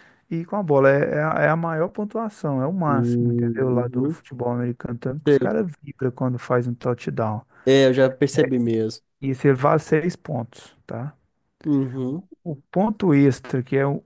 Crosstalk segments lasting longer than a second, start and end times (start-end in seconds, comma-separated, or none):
2.9-4.2